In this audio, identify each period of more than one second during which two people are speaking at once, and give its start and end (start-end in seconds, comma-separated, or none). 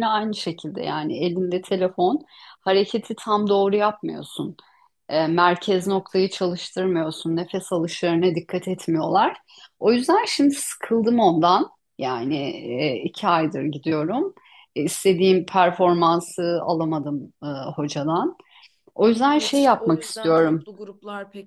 19.3-20.7